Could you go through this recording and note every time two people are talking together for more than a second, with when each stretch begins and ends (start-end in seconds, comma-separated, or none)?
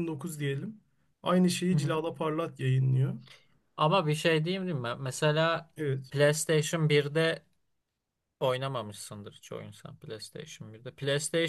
none